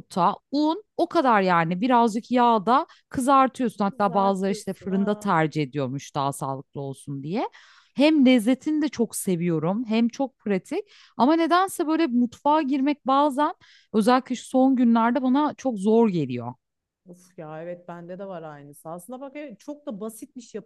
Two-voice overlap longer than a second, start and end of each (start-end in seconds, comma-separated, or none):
3.9-5.3